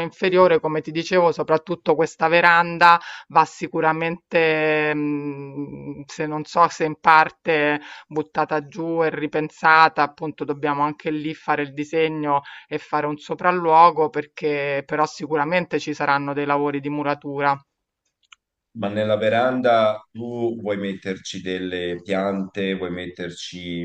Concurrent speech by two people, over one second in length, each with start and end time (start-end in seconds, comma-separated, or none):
none